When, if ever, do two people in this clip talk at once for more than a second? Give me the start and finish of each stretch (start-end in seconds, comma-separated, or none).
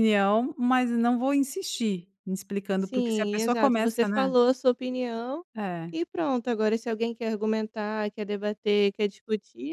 2.8-4.3